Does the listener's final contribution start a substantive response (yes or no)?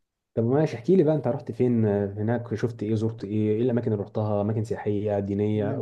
yes